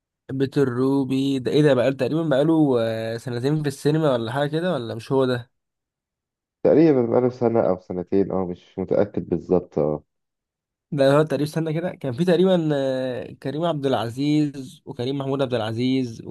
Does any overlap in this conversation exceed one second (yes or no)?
no